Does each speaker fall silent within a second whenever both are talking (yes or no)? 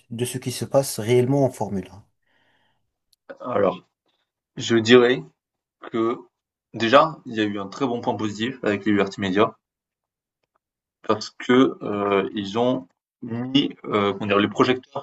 yes